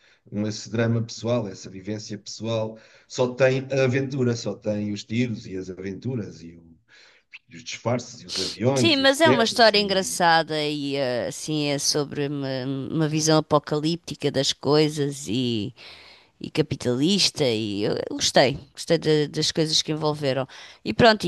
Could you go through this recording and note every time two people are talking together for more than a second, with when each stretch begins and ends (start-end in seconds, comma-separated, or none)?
8.7-10.2